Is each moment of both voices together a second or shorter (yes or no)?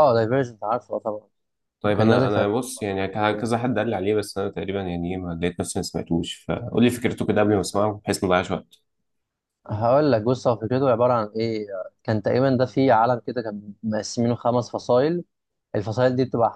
yes